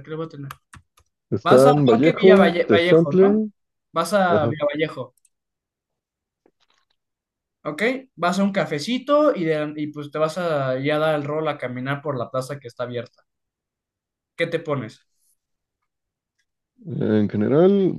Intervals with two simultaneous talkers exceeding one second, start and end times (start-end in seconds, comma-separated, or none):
1.4-3.5